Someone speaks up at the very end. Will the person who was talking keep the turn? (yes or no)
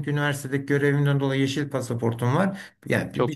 yes